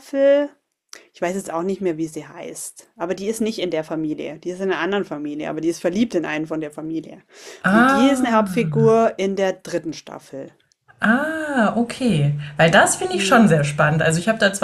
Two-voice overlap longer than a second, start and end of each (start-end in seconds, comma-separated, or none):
7.7-9.0